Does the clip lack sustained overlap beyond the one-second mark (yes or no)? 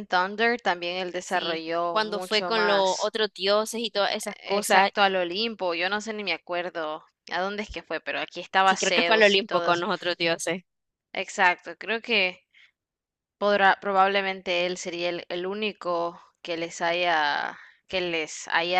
no